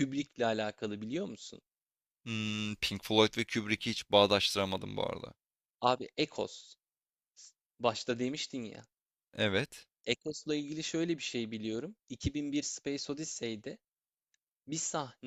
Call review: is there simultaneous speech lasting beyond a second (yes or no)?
no